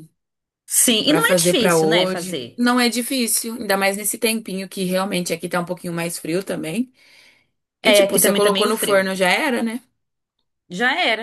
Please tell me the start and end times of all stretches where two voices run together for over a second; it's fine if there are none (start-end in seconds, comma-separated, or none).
1.1-2.6, 7.8-9.1